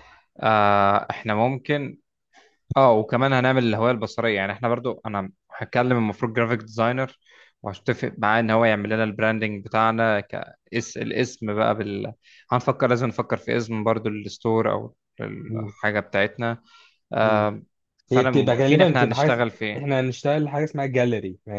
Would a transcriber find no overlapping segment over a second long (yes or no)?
no